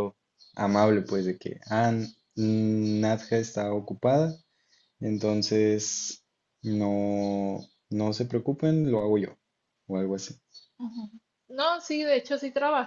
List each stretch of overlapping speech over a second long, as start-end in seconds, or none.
none